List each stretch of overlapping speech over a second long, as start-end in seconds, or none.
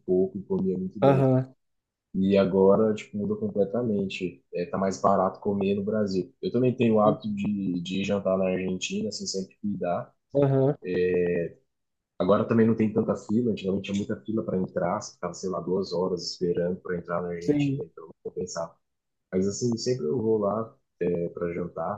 none